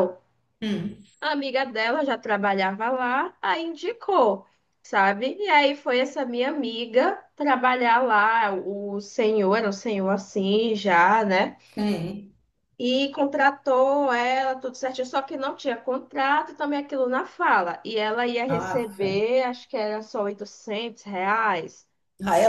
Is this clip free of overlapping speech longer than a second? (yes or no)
yes